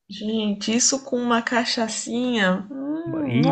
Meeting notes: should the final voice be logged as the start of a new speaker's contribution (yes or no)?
yes